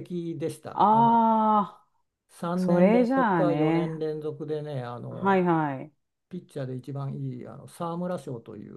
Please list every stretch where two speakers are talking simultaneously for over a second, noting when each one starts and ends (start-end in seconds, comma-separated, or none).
2.5-4.0